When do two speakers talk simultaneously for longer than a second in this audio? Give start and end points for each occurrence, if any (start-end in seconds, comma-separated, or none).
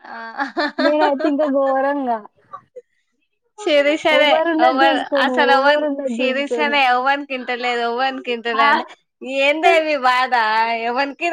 4.2-6.7